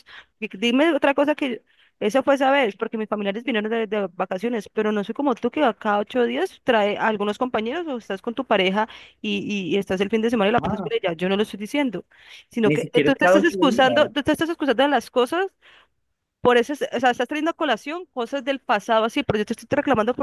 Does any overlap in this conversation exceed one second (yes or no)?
yes